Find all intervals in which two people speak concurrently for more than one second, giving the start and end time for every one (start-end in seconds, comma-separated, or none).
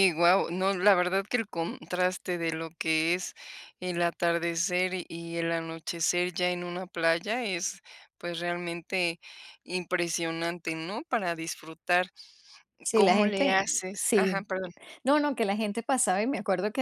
12.9-14.5